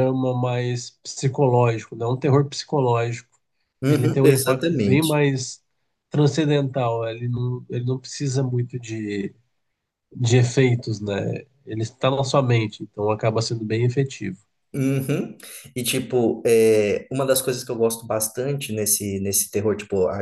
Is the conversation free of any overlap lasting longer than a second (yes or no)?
no